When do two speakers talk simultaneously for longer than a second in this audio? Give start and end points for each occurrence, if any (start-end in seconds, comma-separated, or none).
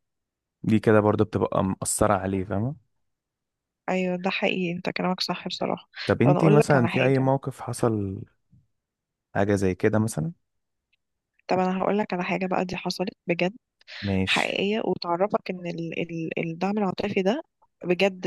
6.0-7.3